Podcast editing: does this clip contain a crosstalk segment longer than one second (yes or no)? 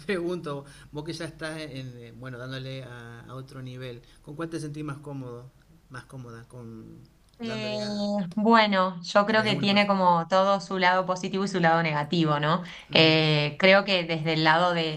no